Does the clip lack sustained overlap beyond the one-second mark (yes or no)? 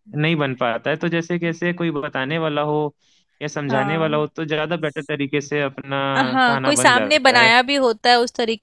no